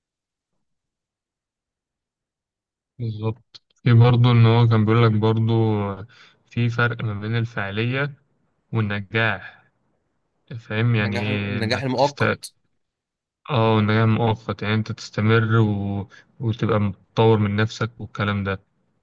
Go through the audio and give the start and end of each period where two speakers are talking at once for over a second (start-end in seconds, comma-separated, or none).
11.0-12.2